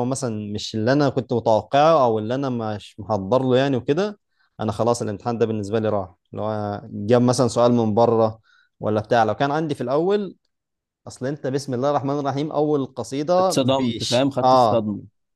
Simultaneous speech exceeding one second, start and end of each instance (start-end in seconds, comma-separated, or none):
13.4-14.8